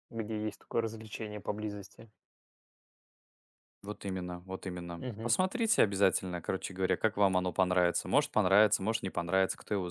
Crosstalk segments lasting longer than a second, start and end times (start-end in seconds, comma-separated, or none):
none